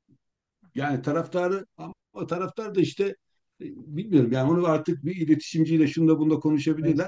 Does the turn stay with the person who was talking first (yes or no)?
yes